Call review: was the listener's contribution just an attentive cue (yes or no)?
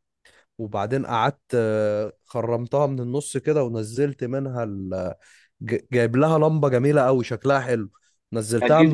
no